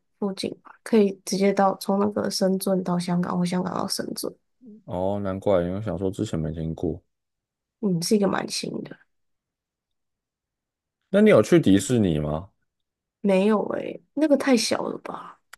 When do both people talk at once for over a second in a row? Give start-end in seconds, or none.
none